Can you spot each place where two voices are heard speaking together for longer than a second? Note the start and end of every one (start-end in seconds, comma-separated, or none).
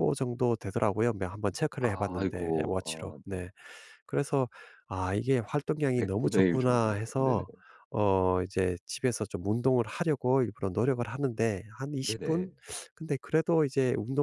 1.8-3.4, 6.2-7.4